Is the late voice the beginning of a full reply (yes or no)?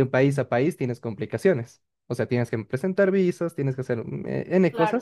no